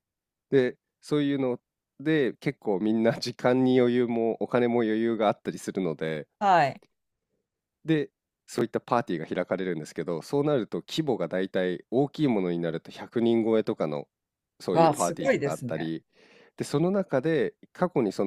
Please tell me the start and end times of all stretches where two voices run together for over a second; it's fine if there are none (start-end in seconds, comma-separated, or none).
14.7-15.9